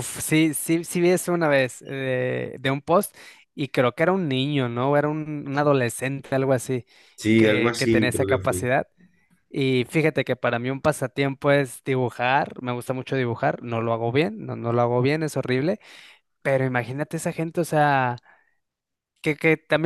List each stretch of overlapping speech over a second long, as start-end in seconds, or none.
7.3-8.7